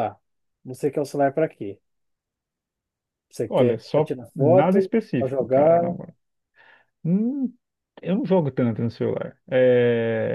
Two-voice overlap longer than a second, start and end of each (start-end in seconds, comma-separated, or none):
3.5-5.8